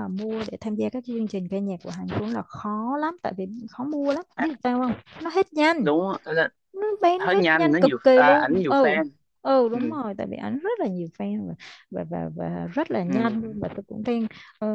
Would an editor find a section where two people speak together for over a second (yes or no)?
yes